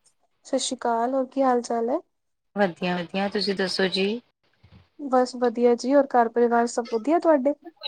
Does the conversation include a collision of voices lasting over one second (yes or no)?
no